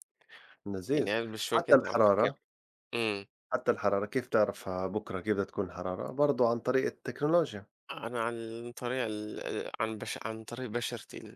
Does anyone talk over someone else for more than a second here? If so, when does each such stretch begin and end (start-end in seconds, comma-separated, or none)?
0.9-2.3